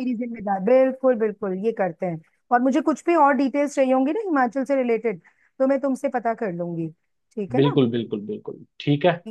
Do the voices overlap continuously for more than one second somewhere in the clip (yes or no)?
no